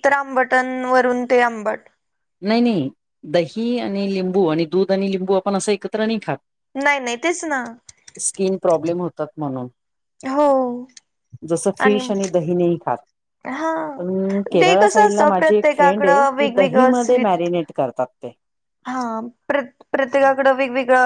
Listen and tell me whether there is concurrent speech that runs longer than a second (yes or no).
yes